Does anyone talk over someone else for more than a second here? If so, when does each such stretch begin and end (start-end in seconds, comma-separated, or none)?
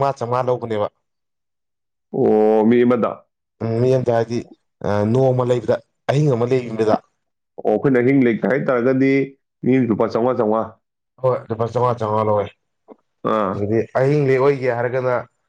none